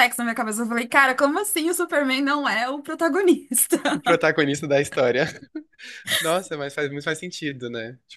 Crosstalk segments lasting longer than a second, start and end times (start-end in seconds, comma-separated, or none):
none